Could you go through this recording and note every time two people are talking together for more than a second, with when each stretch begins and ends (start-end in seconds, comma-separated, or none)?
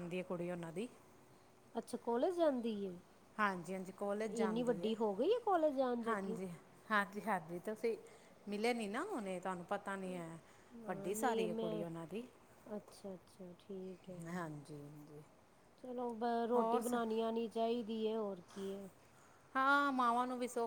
none